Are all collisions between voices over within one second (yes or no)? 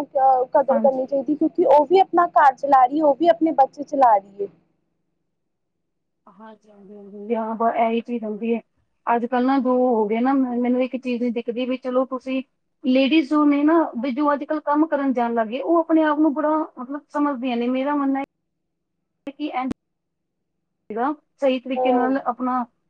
yes